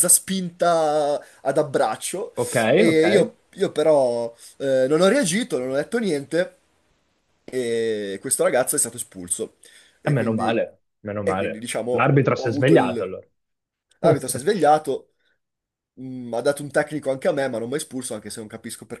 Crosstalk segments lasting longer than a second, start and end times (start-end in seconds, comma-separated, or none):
11.2-13.1